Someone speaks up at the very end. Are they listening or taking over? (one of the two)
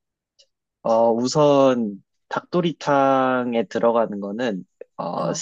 listening